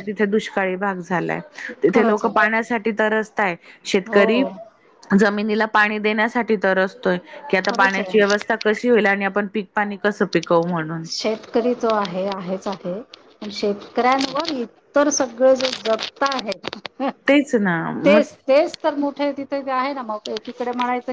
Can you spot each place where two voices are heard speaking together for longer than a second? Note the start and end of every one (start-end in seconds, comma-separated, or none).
none